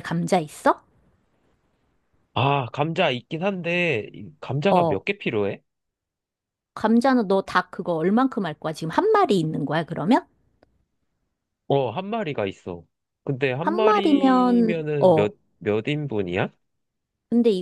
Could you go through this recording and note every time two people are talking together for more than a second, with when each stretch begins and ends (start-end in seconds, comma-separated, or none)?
13.6-15.3